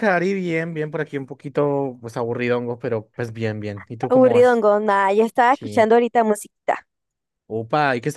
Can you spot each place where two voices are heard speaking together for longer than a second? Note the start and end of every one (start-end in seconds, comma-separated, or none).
none